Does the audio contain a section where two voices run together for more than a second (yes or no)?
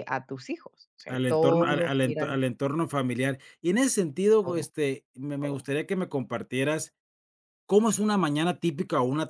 yes